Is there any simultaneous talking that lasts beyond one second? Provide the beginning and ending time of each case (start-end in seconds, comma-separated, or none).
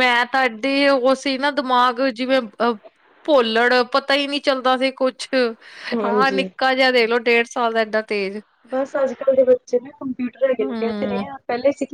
none